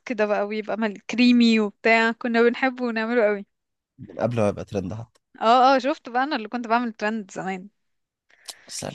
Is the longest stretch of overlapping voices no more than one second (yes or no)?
yes